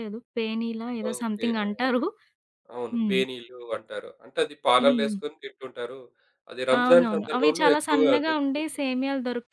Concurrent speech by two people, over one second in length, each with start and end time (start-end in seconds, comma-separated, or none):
6.8-8.9